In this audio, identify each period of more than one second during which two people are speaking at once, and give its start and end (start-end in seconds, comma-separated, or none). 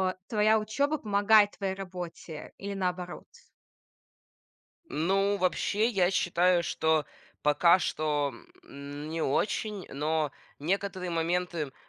none